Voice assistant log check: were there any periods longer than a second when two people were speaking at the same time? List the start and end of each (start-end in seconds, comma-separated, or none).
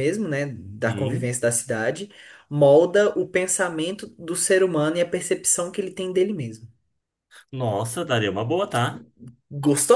none